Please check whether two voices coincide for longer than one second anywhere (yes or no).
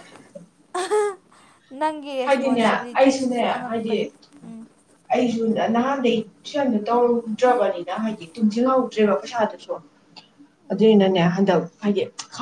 yes